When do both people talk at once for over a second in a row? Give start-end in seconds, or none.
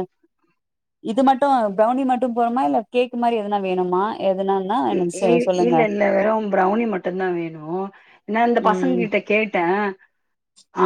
none